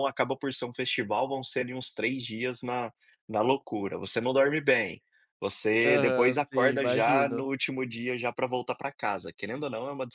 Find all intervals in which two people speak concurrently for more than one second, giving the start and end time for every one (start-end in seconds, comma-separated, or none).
5.8-7.5